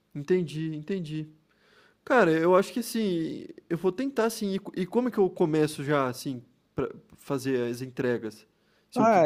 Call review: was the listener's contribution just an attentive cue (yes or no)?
no